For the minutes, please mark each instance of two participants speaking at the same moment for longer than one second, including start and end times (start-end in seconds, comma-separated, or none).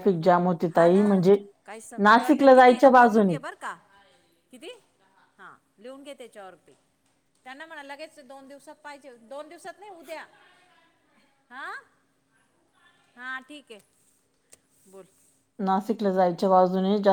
2.1-3.3